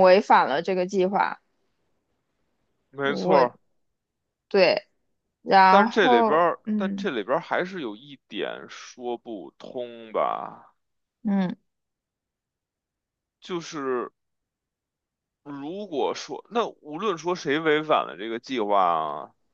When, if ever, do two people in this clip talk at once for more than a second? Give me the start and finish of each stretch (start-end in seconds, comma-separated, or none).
5.7-7.1